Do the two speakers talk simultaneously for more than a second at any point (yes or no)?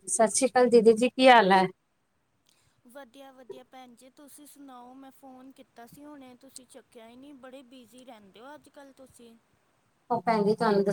no